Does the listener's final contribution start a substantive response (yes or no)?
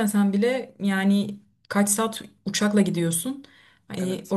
no